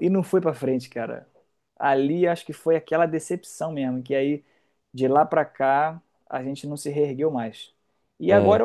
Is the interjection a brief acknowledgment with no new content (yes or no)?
yes